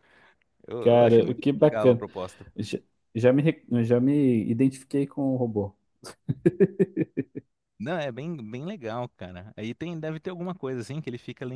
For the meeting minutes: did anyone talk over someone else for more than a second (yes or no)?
yes